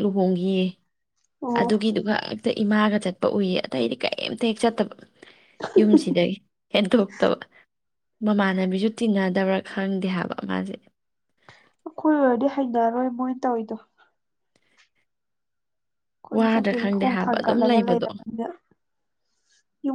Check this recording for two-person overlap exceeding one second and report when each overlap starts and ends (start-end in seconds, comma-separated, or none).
16.4-18.1